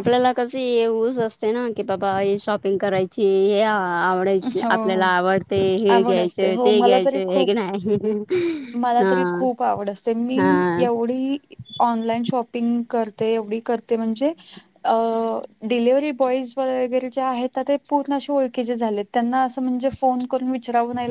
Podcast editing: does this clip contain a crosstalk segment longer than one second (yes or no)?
yes